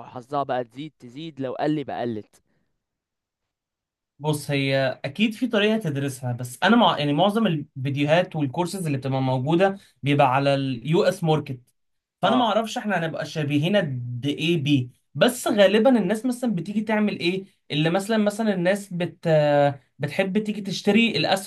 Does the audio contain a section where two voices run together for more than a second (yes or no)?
no